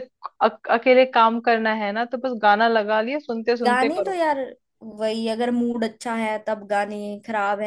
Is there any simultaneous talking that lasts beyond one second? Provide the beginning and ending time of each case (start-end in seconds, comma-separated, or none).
none